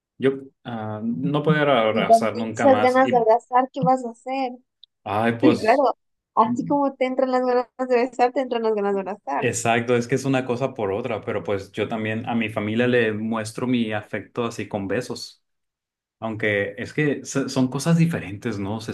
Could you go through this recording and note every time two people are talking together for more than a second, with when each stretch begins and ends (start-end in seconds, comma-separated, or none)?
1.9-3.3